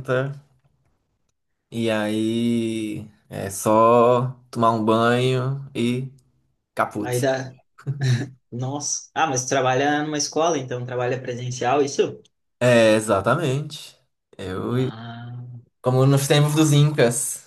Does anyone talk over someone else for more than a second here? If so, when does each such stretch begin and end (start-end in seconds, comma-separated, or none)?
none